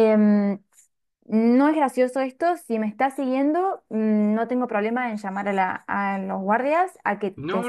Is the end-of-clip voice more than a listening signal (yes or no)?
yes